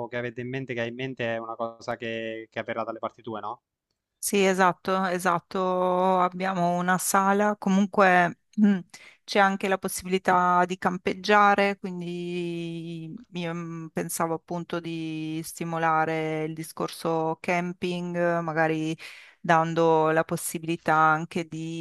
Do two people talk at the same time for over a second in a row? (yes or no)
no